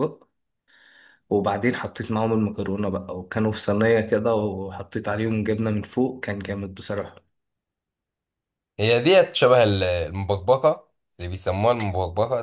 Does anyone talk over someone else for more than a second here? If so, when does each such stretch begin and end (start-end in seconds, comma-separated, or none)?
none